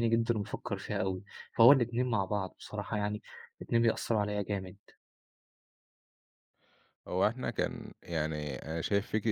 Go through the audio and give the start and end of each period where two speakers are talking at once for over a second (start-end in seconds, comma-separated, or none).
none